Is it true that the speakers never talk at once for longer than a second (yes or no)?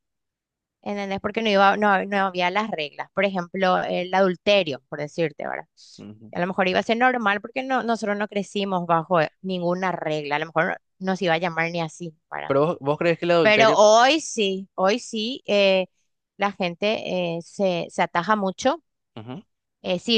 yes